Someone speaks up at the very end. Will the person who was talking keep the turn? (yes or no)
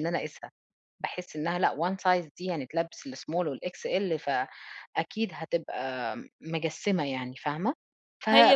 no